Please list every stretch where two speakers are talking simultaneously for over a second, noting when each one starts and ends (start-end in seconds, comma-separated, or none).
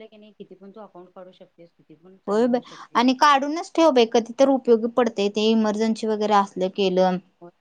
none